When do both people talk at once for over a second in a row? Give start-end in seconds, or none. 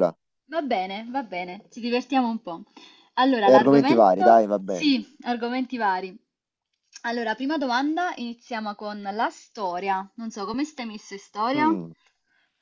3.4-4.9